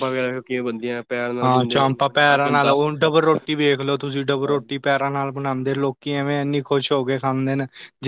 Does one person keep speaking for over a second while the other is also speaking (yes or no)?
yes